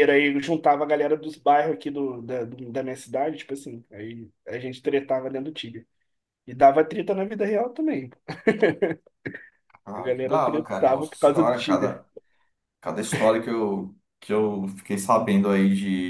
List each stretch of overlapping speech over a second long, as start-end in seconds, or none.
10.0-12.0